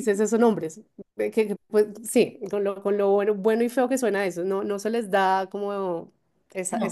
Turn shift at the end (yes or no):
no